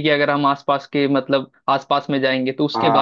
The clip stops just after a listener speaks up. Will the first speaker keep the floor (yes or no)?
yes